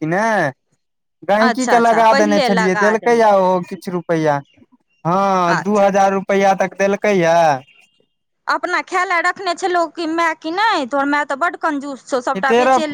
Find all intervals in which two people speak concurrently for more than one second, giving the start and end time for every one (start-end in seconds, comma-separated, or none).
1.4-3.2